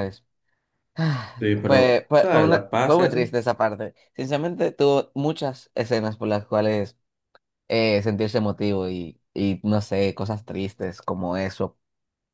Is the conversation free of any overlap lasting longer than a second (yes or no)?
no